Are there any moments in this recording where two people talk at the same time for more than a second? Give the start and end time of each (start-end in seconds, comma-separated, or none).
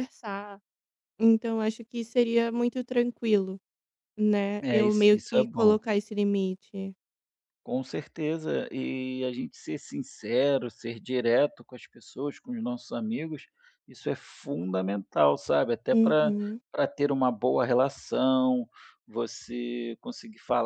4.6-5.8